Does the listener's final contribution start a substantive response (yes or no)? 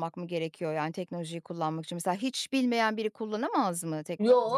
yes